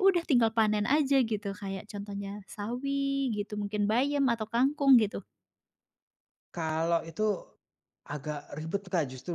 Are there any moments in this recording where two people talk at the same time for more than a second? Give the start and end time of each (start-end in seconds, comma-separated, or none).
none